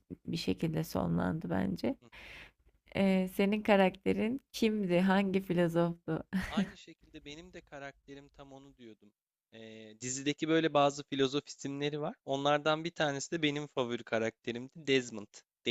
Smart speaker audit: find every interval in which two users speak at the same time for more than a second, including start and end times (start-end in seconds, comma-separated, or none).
none